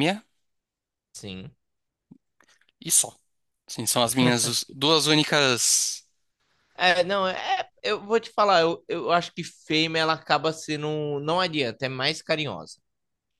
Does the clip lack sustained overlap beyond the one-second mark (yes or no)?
yes